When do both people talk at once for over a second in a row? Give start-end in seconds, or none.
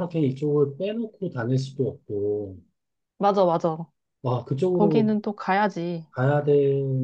none